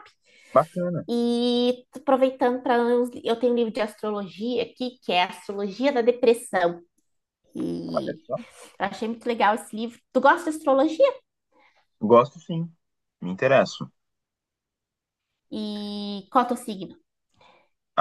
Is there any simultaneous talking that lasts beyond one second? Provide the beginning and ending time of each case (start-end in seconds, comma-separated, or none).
none